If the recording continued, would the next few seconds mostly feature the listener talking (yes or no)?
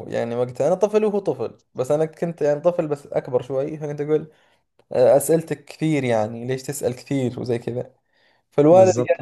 no